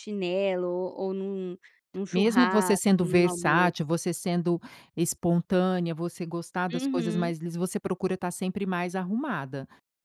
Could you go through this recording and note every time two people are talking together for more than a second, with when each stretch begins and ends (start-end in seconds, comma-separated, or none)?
2.1-3.7